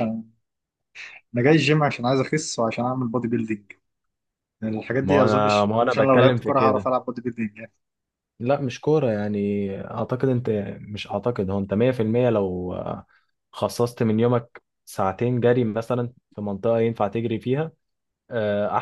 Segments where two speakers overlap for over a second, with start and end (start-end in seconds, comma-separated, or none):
5.0-6.9